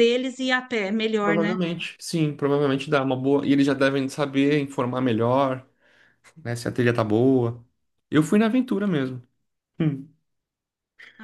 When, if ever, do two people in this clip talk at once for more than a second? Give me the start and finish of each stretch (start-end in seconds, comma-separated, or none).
none